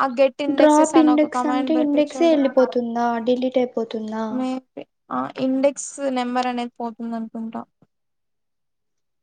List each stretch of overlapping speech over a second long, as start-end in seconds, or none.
0.6-2.4